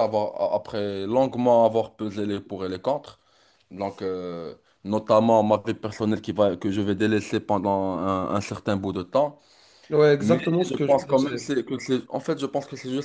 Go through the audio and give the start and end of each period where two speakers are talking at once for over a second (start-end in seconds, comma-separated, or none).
10.2-11.5